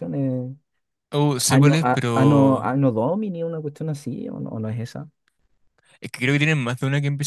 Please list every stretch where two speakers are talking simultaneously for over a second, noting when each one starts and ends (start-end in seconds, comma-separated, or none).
1.5-2.8